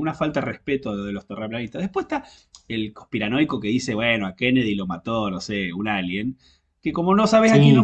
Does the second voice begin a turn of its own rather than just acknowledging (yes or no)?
no